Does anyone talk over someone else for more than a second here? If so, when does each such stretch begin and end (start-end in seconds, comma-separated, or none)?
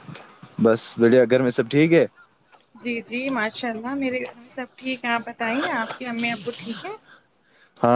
none